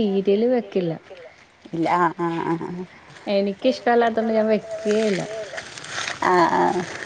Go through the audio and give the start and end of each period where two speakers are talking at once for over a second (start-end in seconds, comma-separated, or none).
none